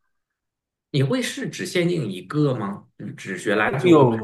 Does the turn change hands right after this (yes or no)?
yes